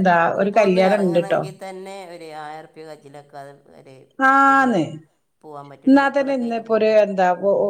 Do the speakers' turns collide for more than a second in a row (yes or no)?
no